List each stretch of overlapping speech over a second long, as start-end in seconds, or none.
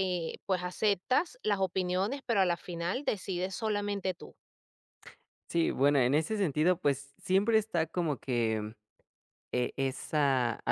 none